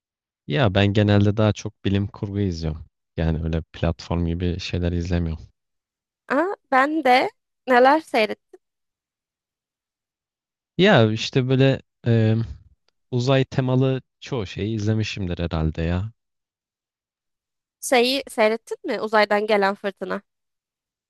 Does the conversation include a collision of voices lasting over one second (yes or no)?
no